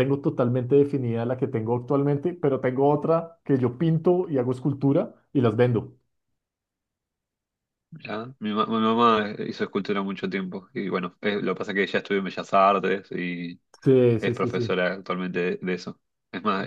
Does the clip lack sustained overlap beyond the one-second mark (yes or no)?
yes